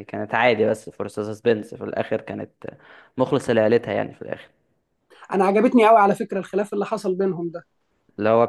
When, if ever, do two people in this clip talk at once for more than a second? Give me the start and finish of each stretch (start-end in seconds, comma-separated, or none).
none